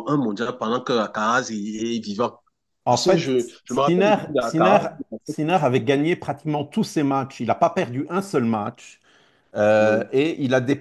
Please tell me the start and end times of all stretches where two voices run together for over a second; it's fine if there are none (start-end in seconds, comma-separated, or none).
2.9-4.8